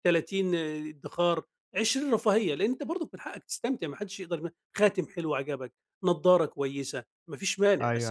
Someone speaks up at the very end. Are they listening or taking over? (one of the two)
taking over